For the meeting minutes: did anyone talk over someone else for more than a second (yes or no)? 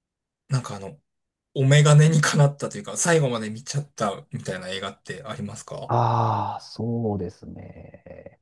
no